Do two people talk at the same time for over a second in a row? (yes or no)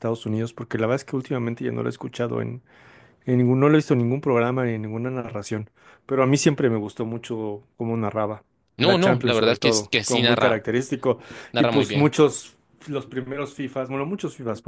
yes